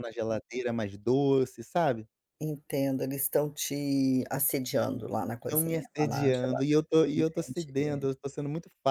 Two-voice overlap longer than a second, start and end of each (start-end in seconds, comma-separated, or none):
5.5-8.1